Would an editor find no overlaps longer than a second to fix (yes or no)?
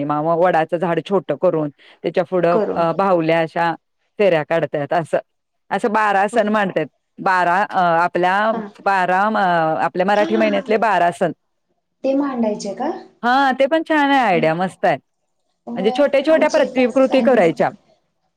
no